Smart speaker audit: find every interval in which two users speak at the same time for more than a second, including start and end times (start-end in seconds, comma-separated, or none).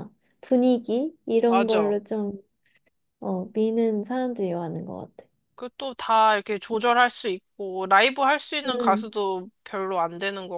none